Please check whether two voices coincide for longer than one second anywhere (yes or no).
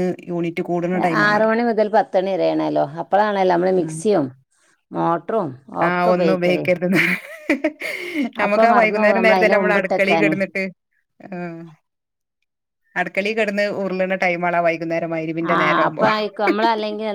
yes